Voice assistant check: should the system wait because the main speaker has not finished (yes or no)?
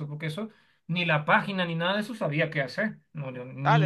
no